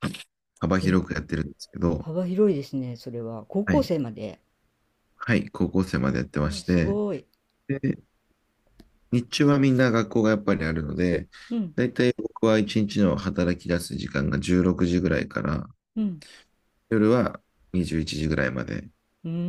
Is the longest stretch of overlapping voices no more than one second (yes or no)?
yes